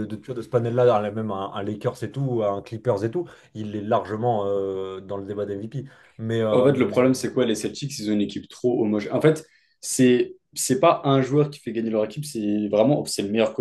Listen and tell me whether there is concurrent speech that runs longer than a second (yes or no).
no